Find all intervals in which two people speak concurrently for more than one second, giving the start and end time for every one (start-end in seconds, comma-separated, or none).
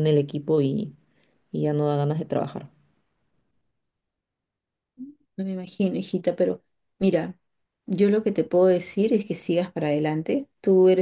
none